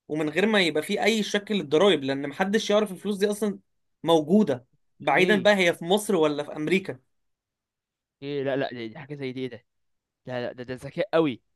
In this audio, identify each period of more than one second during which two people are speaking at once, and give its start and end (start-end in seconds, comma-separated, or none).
none